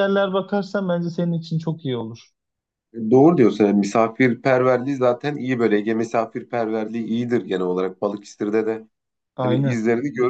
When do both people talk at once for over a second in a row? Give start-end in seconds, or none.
none